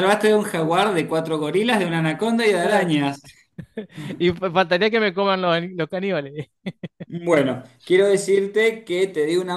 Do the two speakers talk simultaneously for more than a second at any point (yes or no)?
no